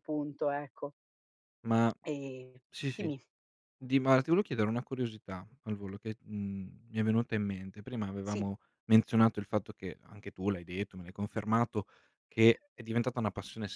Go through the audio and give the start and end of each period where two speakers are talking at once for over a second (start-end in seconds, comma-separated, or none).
none